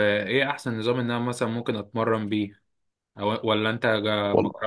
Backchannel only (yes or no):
yes